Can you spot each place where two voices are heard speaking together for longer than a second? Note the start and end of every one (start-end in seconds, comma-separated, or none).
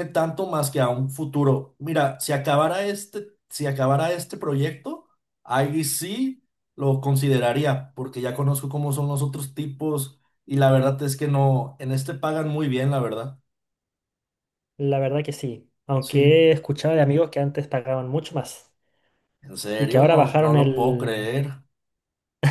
19.8-21.3